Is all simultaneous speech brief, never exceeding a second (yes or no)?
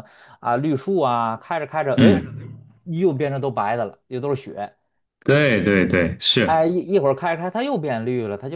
yes